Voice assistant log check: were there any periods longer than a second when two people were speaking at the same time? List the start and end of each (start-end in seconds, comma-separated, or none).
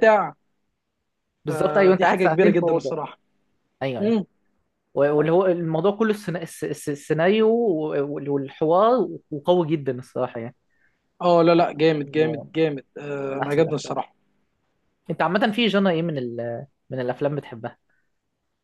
1.5-3.0